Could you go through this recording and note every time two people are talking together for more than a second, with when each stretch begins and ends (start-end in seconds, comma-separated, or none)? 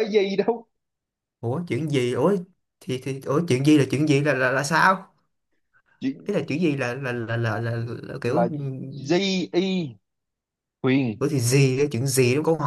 none